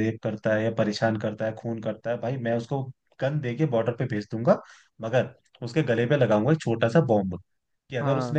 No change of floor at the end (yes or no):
yes